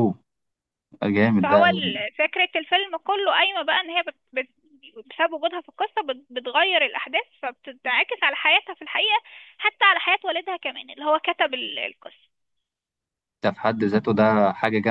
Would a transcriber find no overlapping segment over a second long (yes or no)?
yes